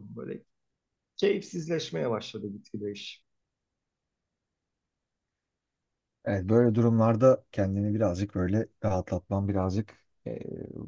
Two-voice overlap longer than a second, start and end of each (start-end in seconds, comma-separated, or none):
none